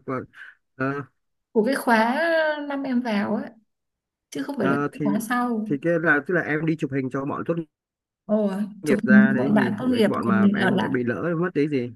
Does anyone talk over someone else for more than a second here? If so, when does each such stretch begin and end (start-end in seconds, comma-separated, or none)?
8.8-10.9